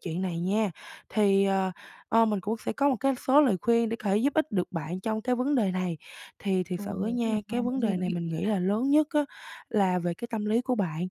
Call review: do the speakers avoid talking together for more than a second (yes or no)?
no